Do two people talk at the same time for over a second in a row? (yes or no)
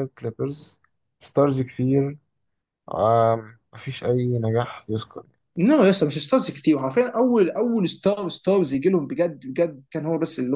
no